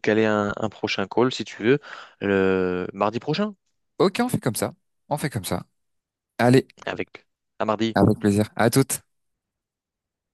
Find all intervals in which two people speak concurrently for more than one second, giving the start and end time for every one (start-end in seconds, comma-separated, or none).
none